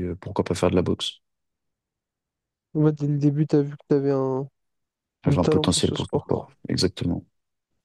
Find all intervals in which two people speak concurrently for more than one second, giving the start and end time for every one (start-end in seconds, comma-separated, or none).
5.3-6.5